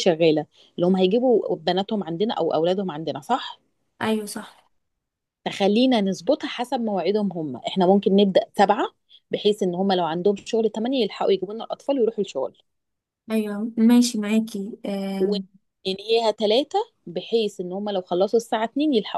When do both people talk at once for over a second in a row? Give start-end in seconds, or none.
none